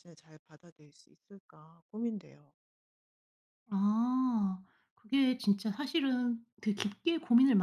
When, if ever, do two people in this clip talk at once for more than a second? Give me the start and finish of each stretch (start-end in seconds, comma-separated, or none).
none